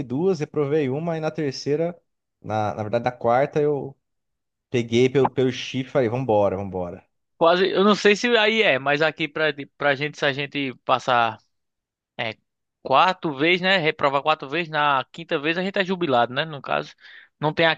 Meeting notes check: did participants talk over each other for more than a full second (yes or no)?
no